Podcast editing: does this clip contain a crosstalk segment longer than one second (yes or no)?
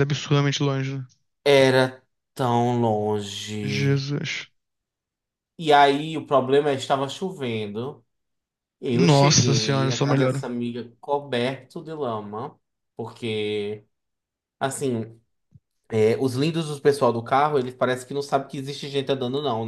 yes